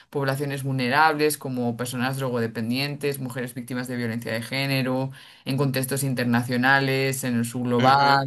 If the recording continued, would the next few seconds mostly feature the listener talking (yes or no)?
no